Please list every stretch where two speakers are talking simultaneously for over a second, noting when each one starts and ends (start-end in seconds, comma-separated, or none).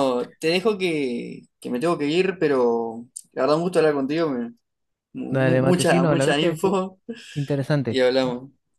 5.3-6.8